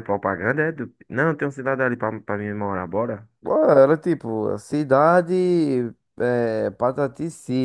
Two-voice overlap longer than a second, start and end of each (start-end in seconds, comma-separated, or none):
none